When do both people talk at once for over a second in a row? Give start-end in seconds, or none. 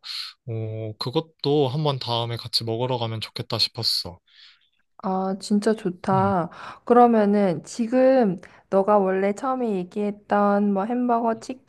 none